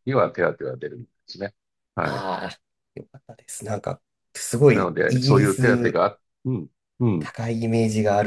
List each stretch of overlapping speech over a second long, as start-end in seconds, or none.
4.7-6.0